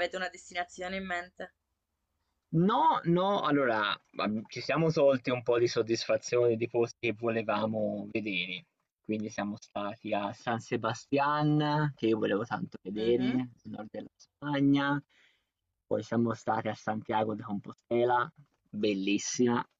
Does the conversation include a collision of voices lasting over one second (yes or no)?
no